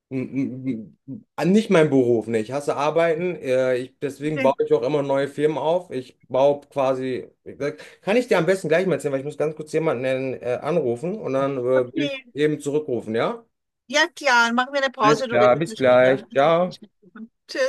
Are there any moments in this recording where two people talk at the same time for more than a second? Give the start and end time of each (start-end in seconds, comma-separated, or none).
15.0-16.2